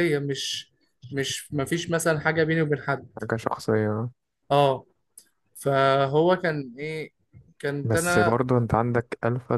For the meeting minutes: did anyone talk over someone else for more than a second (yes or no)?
no